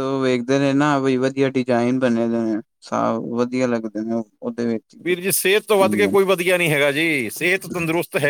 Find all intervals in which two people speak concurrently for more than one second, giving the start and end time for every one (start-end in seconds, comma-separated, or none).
none